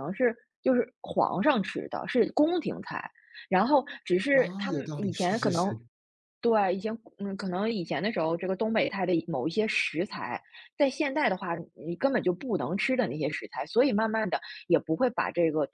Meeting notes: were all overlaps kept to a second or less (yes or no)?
no